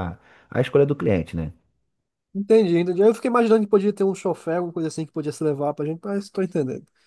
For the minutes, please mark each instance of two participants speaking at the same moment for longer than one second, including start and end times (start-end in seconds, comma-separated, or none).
none